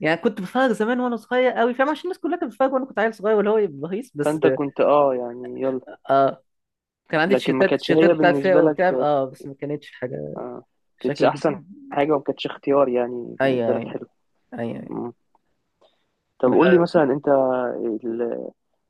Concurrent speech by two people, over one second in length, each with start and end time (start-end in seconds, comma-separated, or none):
7.2-9.1